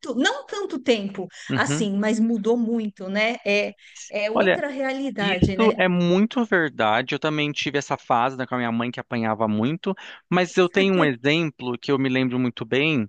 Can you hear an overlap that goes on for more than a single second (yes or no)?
no